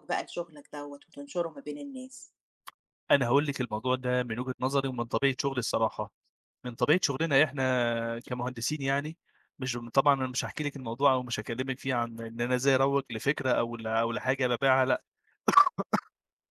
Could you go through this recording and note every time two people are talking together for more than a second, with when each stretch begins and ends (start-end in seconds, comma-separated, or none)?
none